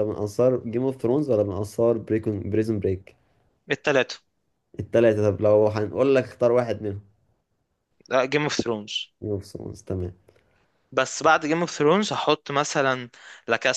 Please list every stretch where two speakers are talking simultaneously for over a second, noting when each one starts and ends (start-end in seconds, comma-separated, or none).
none